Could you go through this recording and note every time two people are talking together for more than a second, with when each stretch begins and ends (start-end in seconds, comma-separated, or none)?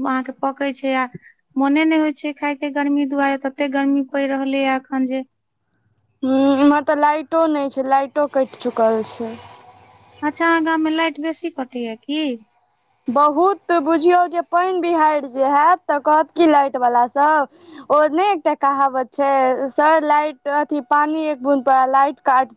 none